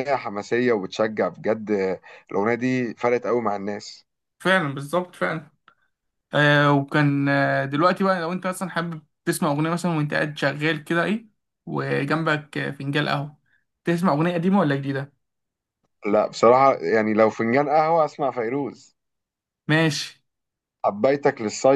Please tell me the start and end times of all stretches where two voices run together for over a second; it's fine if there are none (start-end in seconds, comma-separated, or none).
none